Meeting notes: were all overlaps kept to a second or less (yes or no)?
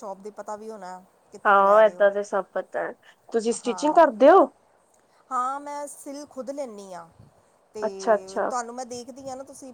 yes